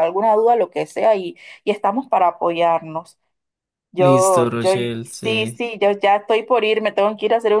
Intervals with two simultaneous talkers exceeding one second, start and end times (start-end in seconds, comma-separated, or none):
4.0-5.6